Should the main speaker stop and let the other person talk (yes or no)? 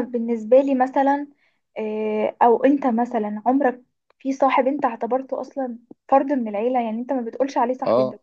yes